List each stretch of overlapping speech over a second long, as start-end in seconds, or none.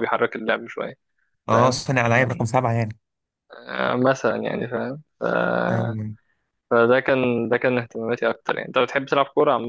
none